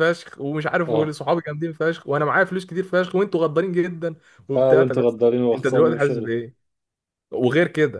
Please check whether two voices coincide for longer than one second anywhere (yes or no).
yes